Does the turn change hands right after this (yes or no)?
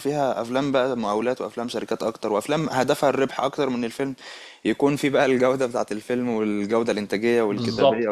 yes